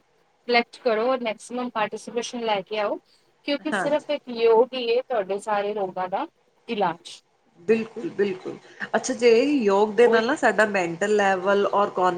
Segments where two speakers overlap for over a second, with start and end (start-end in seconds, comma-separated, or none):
none